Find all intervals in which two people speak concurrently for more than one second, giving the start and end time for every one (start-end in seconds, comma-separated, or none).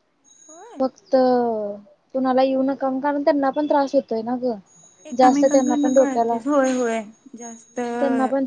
5.2-6.4